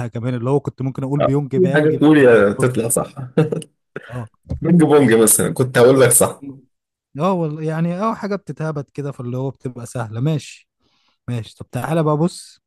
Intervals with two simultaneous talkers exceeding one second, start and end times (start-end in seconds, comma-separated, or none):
1.2-2.9